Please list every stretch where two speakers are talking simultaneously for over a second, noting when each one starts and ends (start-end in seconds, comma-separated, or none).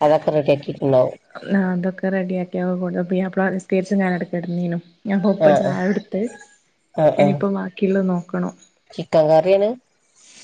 none